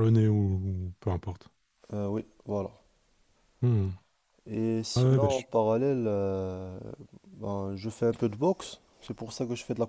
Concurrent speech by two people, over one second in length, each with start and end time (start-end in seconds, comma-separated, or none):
none